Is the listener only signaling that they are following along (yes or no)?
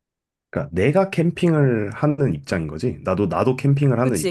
no